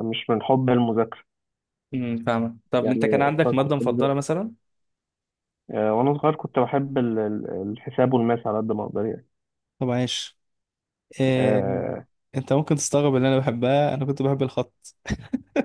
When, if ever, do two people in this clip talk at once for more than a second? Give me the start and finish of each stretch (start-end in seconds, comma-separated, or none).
2.8-4.2